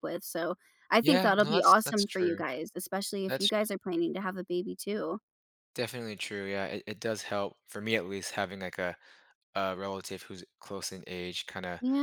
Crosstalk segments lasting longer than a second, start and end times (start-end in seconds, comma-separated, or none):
1.0-2.4